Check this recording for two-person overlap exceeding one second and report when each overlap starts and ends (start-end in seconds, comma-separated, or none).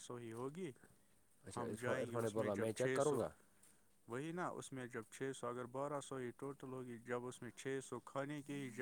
1.6-3.2